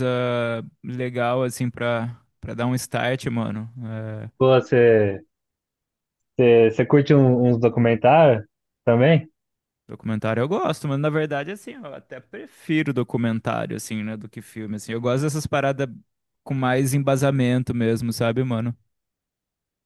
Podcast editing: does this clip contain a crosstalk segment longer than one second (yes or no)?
no